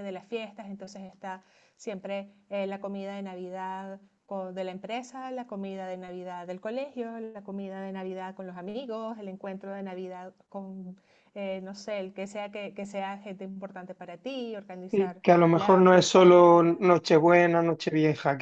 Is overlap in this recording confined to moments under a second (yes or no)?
no